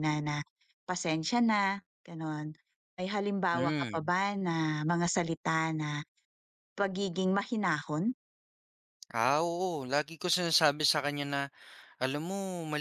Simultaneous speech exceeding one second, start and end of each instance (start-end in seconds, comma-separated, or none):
none